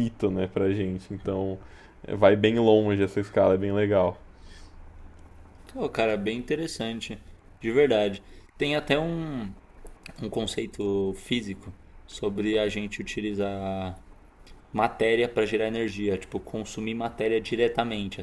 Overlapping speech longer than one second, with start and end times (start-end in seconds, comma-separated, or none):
none